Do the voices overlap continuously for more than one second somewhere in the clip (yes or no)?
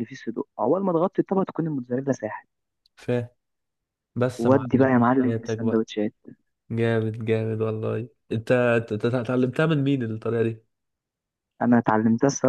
yes